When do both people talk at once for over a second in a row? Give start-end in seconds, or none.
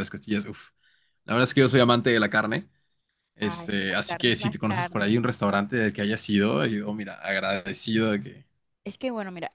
3.4-5.1